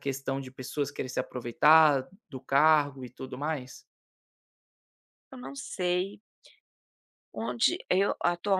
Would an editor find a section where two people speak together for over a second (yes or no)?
no